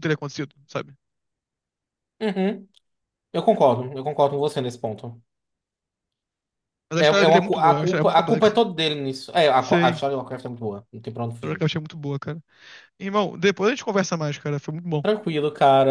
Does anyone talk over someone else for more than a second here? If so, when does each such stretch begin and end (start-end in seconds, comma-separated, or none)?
7.0-8.6